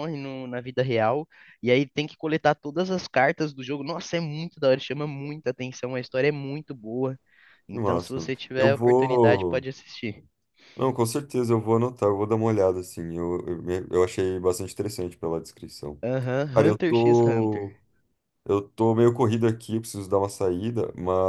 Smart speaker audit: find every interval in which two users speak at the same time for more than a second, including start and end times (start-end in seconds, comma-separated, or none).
7.7-9.7, 16.5-17.7